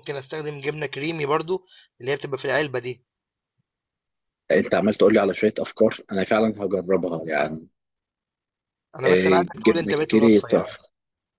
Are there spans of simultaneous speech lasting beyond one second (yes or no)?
yes